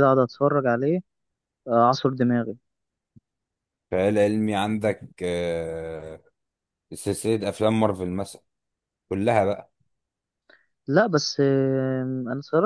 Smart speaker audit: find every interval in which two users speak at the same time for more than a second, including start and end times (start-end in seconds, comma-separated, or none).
none